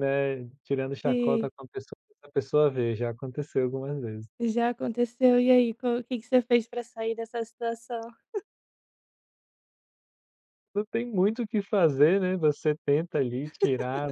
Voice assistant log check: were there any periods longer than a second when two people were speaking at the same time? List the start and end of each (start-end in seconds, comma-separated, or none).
none